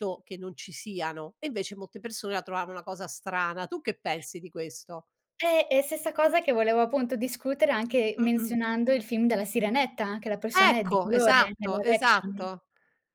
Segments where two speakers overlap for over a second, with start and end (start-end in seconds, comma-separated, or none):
10.5-12.3